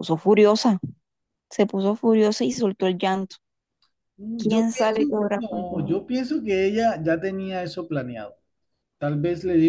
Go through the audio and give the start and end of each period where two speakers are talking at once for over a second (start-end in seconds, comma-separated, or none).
4.3-6.0